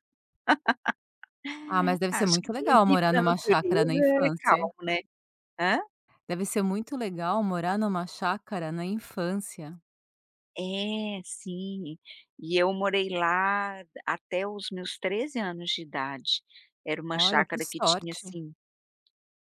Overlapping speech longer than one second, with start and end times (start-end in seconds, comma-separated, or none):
1.9-4.6, 17.1-18.4